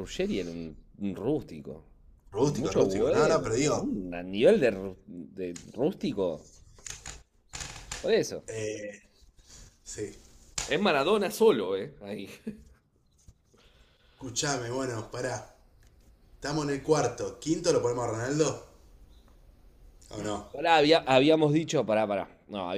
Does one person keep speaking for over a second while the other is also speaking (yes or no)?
yes